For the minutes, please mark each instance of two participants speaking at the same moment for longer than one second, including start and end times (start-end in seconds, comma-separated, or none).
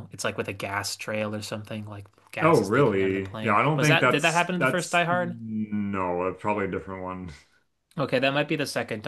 2.4-5.3